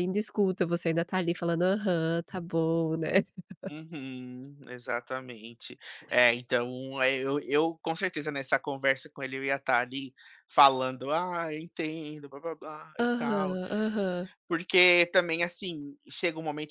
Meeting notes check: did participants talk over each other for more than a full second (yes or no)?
no